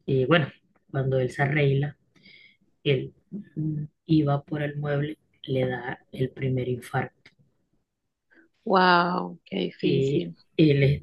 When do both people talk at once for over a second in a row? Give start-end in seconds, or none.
none